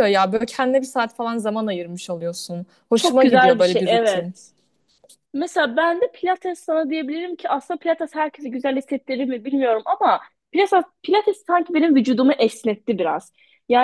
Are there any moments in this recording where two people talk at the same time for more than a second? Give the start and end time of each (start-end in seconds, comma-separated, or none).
2.9-4.3